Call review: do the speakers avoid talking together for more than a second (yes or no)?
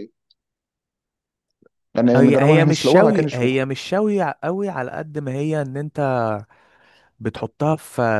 no